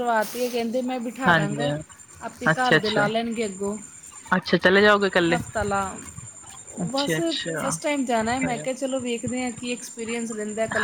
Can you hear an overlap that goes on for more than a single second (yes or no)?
no